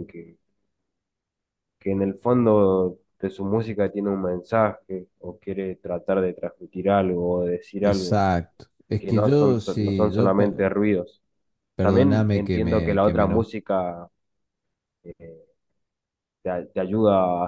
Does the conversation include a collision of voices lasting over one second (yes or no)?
yes